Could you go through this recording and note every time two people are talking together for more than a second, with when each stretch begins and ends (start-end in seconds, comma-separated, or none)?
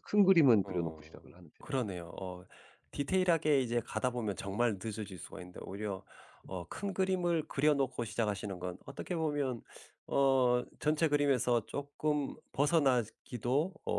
0.6-1.9